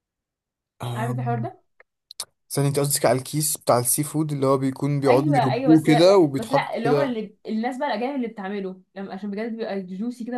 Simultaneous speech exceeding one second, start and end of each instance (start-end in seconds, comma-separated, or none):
5.1-7.1